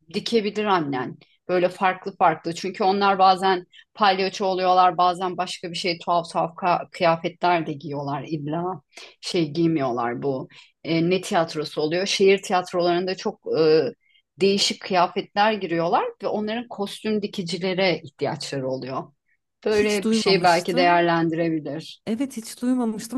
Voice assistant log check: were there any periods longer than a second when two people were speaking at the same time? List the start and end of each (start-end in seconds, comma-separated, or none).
19.7-21.0